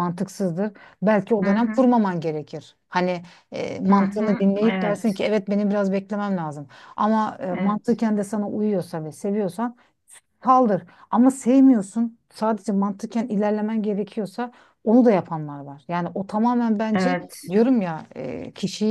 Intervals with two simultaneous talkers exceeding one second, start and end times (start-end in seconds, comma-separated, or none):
3.9-5.2